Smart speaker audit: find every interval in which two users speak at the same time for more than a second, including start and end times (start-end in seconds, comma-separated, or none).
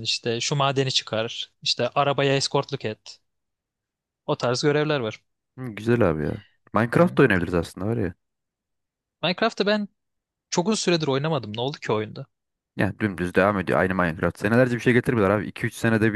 none